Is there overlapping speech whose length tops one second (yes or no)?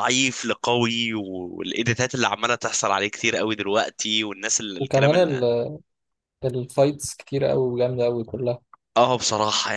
no